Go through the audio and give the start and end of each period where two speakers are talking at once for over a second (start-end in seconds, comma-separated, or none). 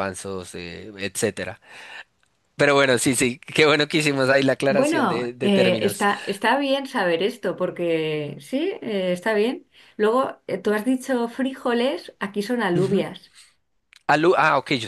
4.7-6.0